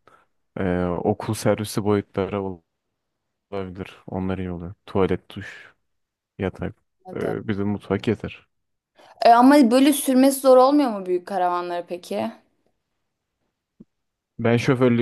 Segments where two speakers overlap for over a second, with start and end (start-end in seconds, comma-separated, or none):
none